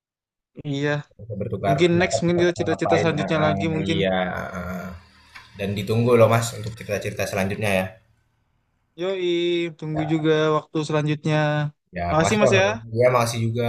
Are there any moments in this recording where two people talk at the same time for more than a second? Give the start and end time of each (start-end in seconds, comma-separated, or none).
1.6-4.0